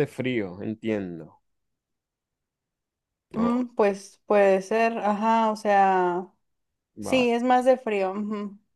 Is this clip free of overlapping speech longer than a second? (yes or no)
yes